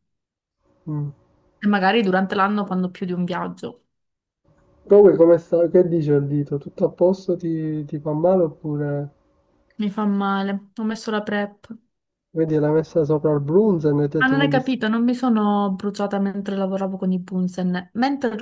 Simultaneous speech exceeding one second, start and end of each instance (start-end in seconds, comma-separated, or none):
none